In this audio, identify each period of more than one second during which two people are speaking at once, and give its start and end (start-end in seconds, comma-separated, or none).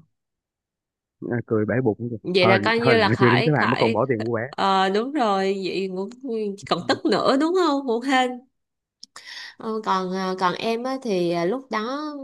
2.2-4.0